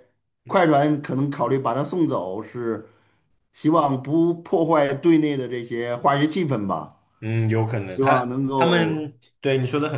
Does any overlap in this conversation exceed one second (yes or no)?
yes